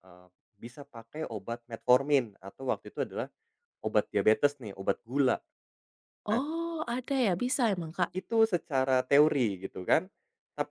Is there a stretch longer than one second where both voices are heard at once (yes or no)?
no